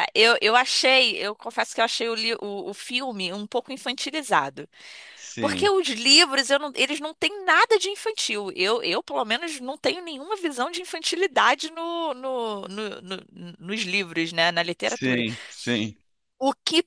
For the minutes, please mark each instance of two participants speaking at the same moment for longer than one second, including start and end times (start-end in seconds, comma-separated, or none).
none